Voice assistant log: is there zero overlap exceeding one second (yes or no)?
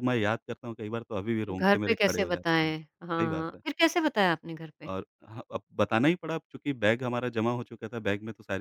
no